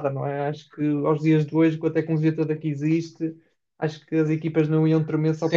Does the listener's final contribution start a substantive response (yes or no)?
yes